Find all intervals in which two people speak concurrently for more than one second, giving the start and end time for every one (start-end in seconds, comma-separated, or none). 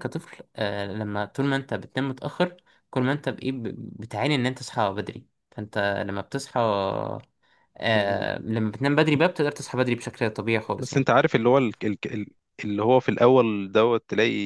none